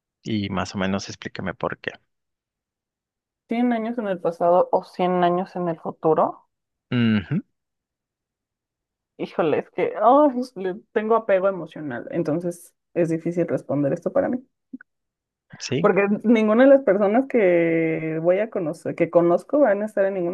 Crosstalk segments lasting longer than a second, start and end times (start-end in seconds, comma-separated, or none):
none